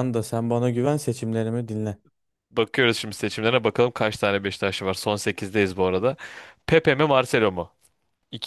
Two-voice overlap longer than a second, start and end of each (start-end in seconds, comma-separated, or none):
none